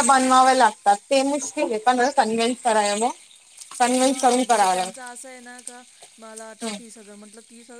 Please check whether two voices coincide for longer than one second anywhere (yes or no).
no